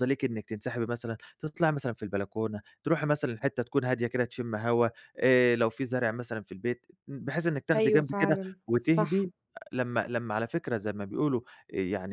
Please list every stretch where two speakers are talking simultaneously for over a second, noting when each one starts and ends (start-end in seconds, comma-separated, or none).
7.7-9.3